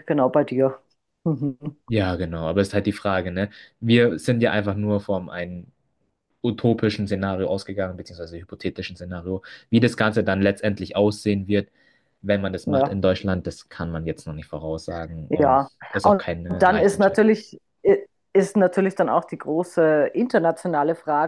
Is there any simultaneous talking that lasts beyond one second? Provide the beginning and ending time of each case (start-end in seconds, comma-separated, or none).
15.3-17.3